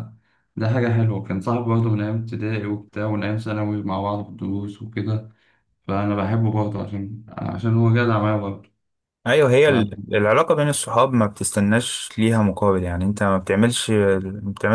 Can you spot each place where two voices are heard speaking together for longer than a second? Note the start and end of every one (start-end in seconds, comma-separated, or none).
none